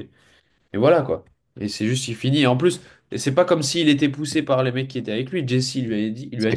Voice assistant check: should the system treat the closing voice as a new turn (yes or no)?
yes